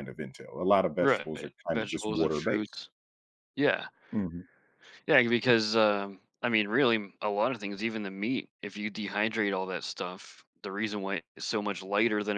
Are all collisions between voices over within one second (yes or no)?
no